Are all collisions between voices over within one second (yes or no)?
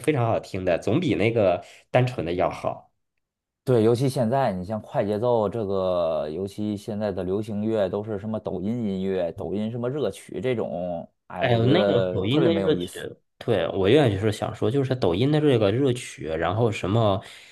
no